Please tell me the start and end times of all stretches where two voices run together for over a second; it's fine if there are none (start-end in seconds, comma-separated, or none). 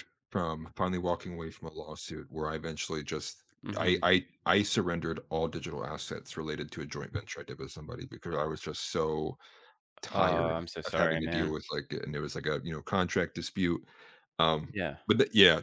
10.1-11.6